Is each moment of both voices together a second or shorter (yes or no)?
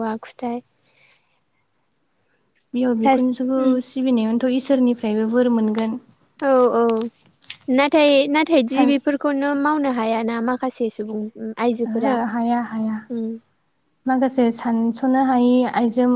yes